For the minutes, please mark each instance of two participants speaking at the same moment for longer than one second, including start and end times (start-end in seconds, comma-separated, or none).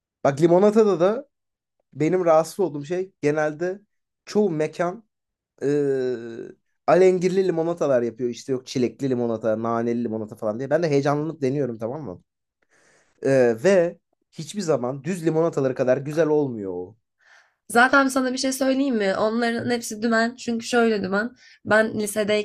none